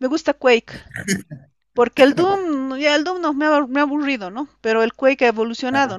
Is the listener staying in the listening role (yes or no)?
yes